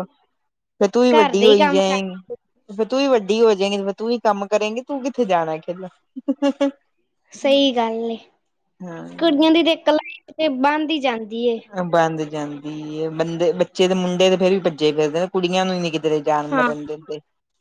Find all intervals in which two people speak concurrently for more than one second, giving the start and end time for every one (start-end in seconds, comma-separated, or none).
1.1-2.4